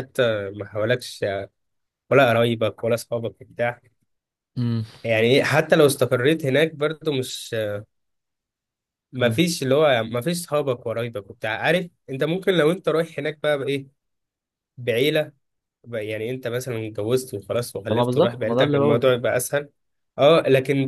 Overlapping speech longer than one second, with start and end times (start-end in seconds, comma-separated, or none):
17.9-19.1